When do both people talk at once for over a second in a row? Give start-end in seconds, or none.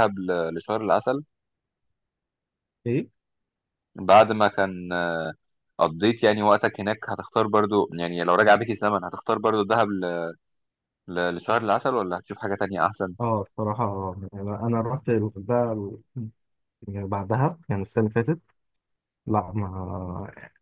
none